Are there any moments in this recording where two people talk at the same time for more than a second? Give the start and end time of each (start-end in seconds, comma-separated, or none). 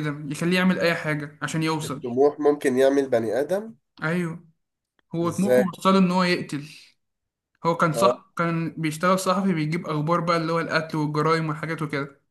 none